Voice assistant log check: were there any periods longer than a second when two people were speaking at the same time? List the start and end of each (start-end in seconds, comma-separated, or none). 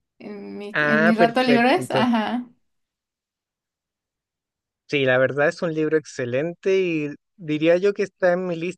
0.7-2.1